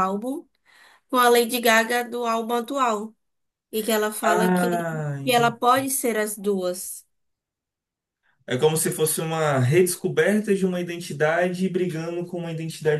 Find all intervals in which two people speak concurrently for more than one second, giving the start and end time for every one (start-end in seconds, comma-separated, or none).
4.2-5.6